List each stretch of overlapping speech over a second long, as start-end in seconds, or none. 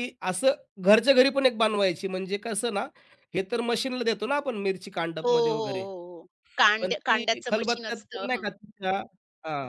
6.8-8.4